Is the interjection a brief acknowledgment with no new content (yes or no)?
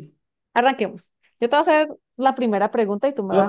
no